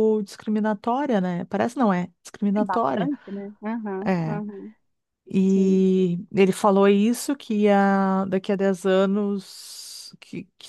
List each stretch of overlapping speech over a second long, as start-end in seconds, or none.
none